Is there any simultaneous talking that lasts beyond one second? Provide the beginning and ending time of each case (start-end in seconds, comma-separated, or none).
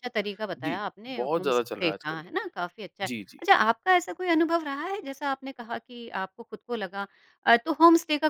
0.6-2.2